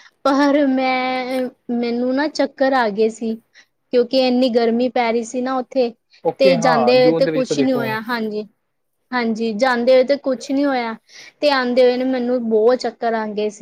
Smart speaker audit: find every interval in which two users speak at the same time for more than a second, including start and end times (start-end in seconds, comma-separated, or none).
6.4-7.8